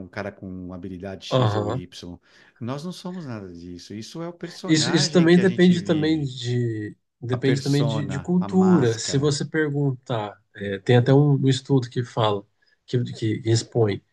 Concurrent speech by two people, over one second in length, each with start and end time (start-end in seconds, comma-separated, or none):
4.7-6.3, 7.3-9.3